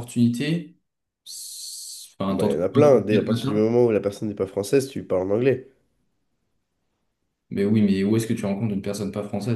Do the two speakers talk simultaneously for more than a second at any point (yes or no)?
yes